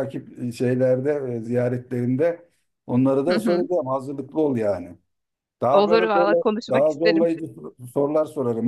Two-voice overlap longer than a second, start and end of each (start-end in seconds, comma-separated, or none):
5.7-7.3